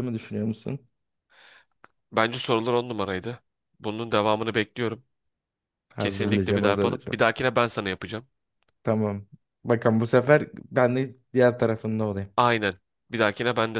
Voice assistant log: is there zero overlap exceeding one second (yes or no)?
no